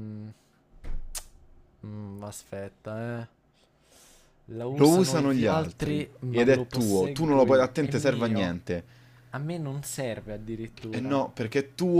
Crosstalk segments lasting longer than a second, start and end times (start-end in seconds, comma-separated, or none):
4.8-8.5